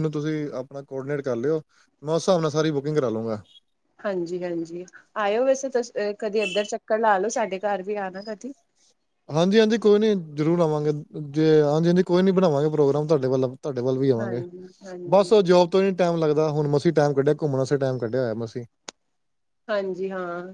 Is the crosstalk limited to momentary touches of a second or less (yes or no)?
yes